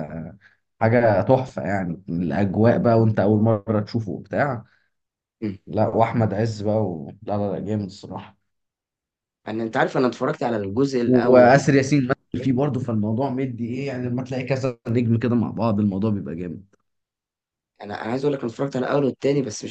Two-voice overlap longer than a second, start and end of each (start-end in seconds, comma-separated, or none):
11.0-12.6